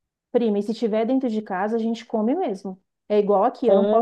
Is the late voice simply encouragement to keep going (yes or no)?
yes